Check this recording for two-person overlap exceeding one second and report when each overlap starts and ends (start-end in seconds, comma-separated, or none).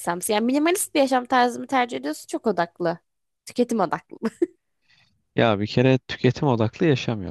none